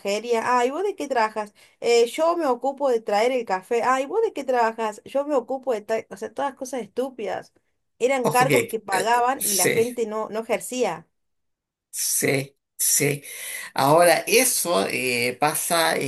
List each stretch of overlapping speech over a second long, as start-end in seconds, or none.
8.2-9.8